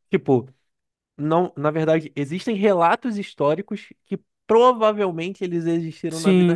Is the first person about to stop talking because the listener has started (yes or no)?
yes